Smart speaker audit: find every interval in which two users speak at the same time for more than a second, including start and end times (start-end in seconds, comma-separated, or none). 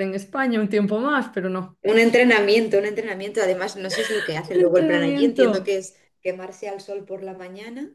4.5-5.8